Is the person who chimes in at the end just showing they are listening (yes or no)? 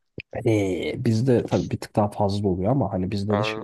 yes